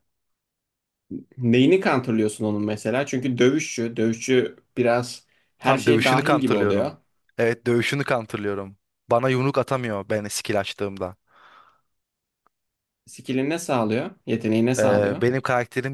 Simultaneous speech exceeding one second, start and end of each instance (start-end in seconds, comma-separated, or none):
5.6-6.9